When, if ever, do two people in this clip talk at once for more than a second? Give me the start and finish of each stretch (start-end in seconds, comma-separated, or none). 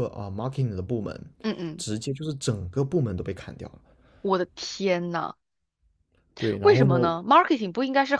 none